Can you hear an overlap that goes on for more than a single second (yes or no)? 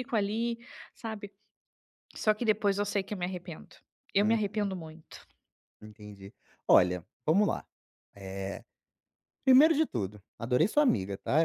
no